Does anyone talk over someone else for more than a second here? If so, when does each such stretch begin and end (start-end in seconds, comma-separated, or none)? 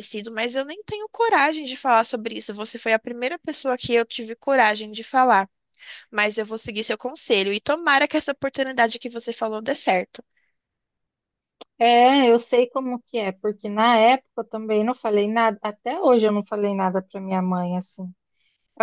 none